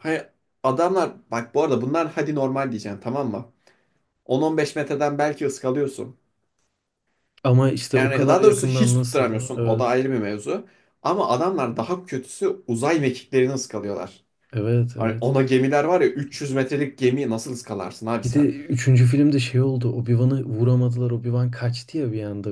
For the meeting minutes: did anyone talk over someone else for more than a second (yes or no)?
yes